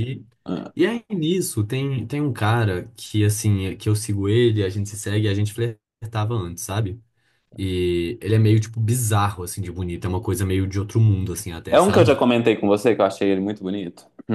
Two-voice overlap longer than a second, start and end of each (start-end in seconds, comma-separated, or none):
none